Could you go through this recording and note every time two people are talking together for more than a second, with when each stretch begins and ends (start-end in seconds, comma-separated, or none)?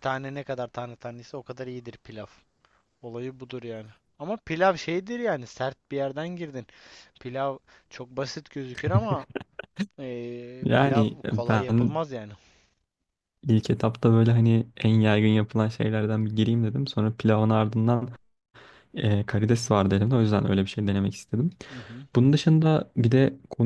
10.6-12.0